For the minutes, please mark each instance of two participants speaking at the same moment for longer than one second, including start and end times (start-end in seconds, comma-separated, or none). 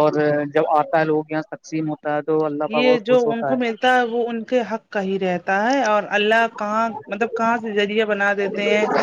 none